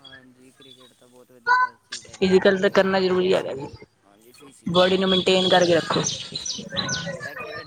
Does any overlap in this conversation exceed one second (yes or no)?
yes